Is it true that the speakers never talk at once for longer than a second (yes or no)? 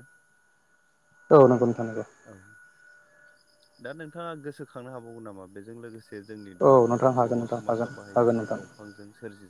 no